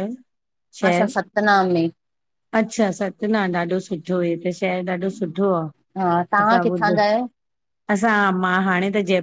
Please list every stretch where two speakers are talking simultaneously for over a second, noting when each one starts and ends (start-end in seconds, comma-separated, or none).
none